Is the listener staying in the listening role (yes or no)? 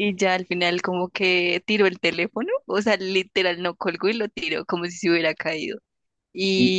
yes